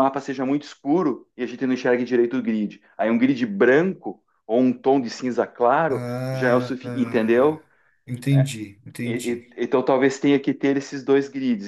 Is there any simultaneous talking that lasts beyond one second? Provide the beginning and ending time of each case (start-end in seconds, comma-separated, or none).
5.9-7.6